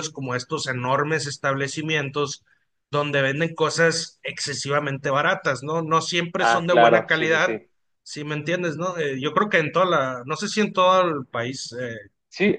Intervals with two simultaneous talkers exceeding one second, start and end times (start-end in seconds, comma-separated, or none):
6.4-7.6